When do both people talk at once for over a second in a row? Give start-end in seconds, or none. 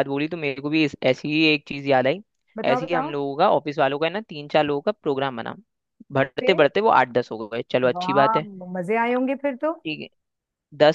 none